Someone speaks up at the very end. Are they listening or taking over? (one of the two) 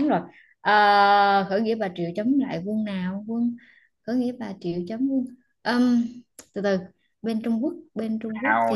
taking over